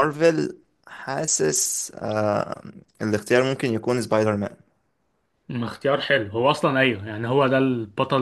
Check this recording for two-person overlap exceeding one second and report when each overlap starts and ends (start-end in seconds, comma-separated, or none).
none